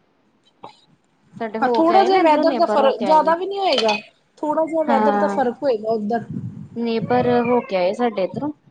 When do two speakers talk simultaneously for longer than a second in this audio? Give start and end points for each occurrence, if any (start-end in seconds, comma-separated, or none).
1.6-3.3